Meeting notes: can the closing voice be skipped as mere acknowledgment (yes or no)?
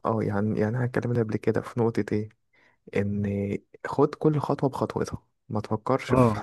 no